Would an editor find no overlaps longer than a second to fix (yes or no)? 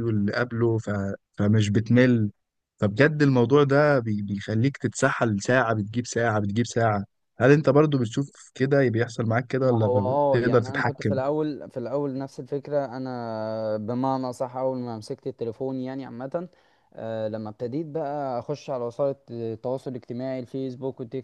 no